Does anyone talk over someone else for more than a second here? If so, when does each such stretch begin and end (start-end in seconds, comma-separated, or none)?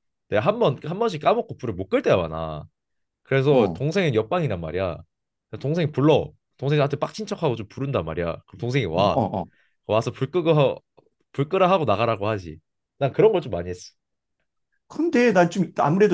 none